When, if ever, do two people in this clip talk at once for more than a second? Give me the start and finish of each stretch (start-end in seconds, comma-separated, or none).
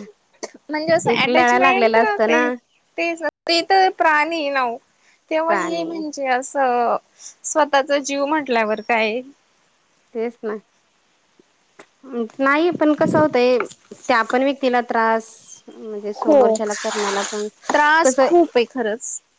1.1-2.4